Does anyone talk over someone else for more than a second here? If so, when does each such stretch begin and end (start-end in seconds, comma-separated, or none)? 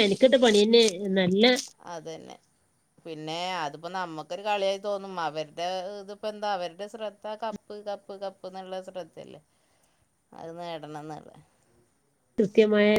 none